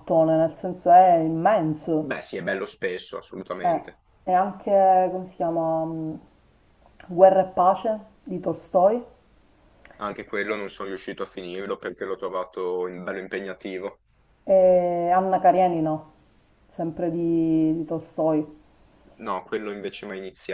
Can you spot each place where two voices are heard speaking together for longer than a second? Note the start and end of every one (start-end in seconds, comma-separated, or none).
none